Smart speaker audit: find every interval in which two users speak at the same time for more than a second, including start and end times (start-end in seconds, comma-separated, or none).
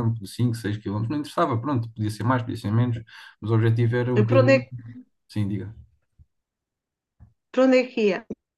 none